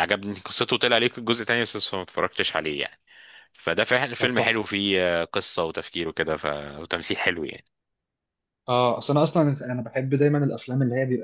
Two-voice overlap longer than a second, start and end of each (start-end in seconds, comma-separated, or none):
none